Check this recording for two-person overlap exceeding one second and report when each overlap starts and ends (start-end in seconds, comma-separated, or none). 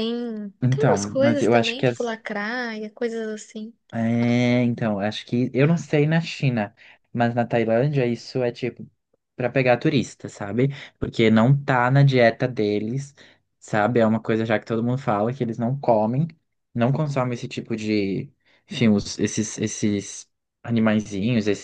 0.6-2.1